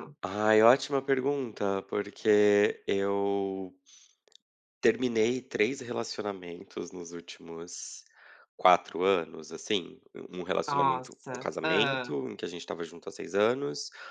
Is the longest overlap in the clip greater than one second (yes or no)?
yes